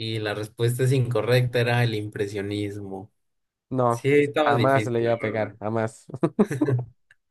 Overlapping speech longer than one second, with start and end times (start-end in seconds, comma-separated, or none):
3.9-5.6